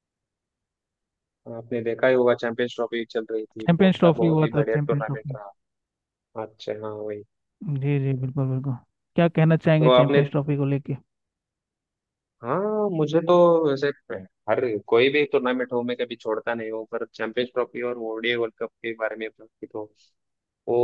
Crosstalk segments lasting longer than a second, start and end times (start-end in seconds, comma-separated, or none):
3.6-5.4